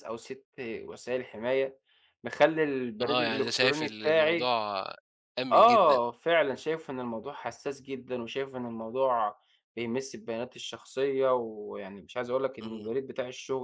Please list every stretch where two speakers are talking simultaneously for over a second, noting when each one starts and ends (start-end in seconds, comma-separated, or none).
3.0-4.5